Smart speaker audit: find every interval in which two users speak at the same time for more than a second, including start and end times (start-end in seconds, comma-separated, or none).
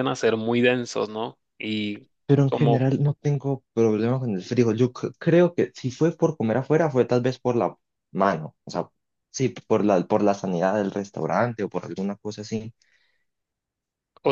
none